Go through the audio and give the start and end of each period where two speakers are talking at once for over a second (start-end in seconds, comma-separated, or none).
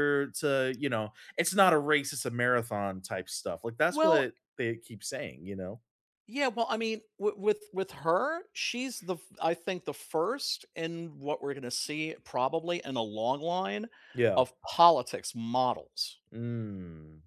none